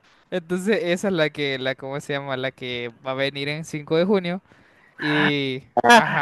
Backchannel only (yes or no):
no